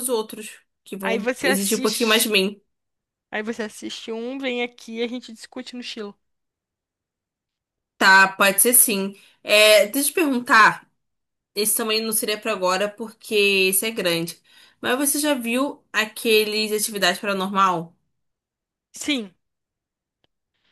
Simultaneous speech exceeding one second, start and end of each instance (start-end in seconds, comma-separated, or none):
1.0-2.3